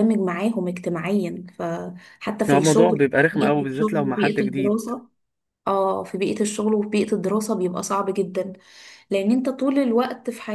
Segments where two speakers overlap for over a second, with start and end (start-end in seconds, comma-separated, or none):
2.5-4.8